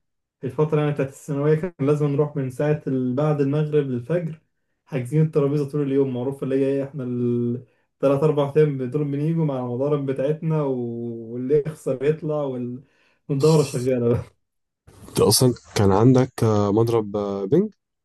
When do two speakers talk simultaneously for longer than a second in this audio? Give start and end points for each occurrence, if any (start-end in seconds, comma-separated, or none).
none